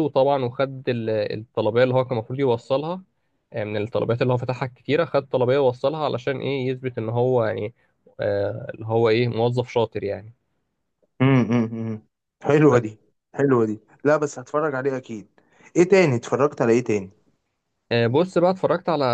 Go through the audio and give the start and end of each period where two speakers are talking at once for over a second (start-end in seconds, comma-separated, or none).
none